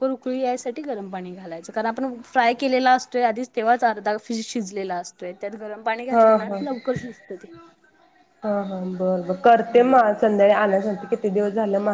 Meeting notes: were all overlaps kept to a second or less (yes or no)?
yes